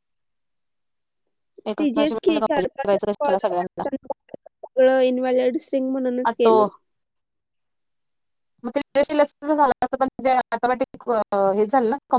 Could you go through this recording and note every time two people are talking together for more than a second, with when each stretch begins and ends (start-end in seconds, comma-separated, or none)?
1.8-3.8